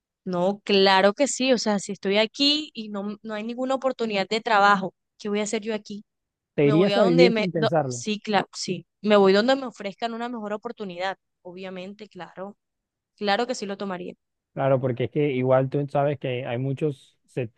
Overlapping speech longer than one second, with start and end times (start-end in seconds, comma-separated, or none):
6.6-8.0